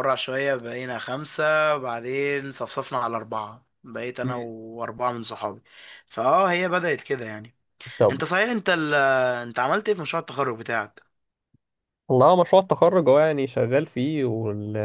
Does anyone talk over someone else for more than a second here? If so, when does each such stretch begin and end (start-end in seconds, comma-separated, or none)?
none